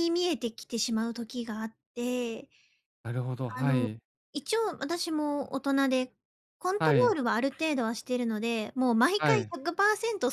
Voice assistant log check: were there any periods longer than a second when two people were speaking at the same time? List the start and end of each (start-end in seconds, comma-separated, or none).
none